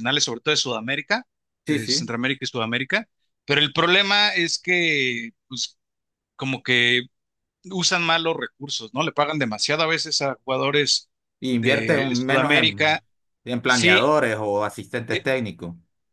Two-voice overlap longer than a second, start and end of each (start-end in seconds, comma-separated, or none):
11.5-13.0